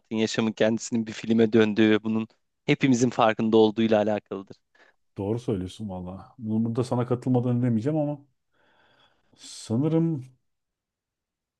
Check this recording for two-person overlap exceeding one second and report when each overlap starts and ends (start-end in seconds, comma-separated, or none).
none